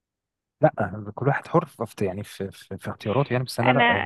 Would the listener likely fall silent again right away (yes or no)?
no